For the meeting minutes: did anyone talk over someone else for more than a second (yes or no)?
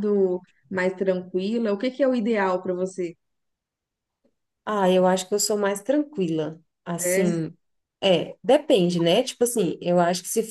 no